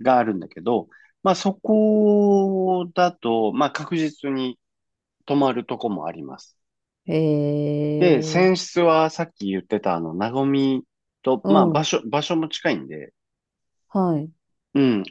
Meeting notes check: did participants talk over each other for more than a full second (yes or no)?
no